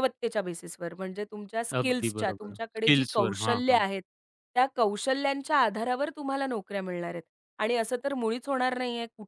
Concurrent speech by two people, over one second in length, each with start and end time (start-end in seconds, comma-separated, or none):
1.8-3.8